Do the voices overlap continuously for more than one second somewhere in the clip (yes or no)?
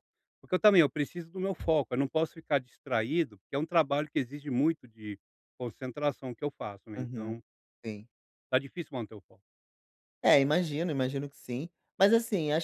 no